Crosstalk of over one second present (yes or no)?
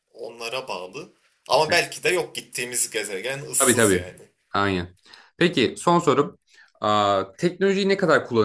no